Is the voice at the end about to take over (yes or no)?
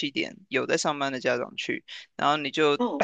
no